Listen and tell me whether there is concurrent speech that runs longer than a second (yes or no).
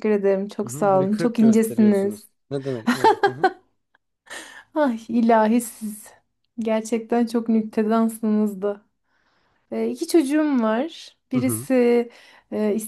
yes